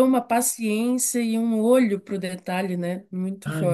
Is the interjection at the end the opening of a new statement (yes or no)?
yes